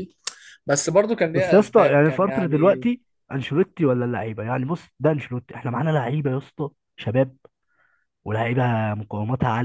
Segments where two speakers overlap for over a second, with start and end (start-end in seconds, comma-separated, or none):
1.3-2.9